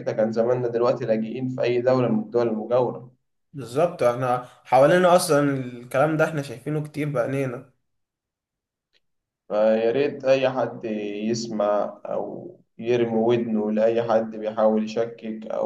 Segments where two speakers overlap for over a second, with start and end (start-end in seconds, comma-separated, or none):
none